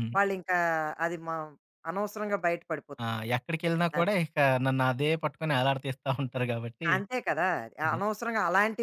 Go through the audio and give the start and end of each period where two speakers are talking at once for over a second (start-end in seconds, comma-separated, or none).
none